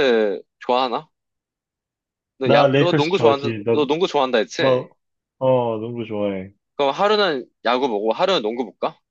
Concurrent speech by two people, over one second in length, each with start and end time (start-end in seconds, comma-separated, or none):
2.4-3.8